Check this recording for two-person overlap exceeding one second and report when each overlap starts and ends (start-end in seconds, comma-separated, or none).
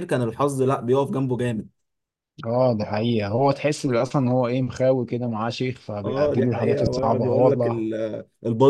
6.0-7.8